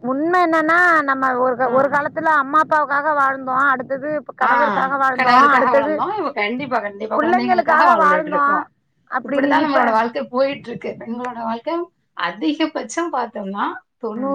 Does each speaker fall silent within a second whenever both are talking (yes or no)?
no